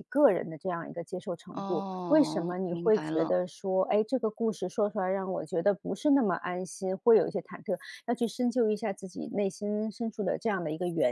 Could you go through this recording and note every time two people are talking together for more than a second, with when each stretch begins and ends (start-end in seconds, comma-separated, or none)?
1.5-3.3